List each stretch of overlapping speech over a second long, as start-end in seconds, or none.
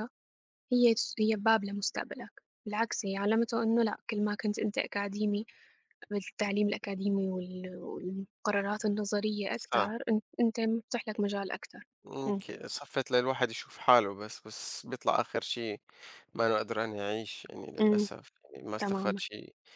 none